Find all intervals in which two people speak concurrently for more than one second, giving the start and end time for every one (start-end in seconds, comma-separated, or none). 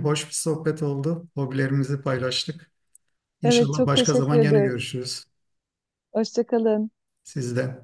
3.4-4.7